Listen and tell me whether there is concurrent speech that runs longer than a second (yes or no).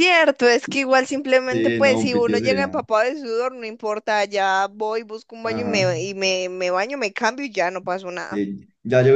yes